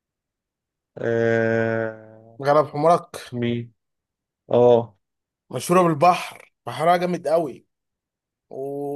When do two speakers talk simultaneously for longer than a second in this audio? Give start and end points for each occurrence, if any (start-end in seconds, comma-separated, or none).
none